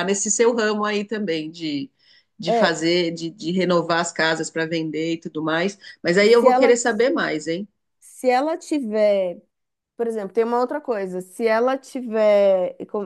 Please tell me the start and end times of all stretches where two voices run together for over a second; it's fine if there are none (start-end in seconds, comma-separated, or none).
none